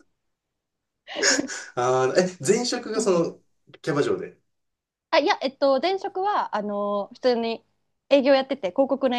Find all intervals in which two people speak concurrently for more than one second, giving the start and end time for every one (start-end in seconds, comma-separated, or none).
none